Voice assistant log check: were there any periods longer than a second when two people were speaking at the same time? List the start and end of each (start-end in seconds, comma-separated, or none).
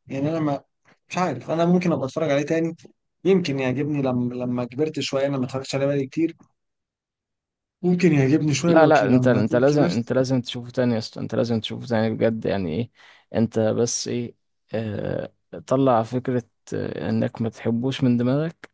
8.7-10.1